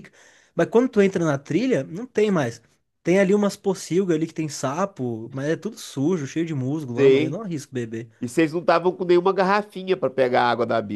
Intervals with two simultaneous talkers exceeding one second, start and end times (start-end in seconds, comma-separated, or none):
none